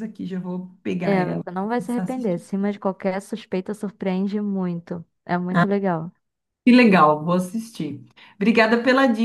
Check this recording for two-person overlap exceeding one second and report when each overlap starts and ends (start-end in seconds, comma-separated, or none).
1.0-2.4